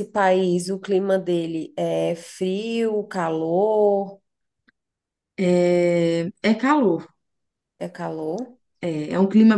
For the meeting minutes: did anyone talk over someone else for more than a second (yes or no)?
no